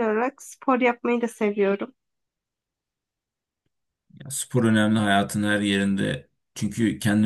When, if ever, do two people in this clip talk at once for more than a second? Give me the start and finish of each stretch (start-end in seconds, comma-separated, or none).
none